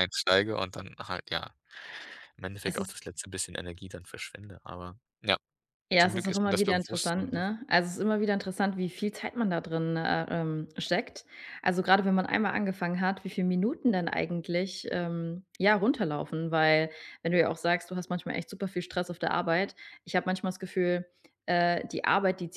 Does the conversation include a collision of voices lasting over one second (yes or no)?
yes